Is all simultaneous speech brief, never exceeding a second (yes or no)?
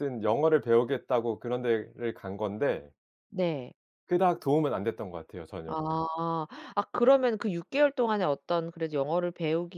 yes